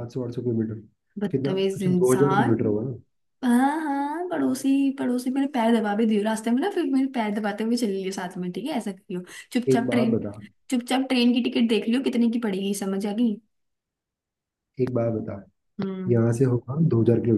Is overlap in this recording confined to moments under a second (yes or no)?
no